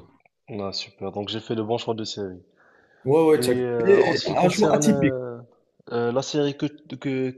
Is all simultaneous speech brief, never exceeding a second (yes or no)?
no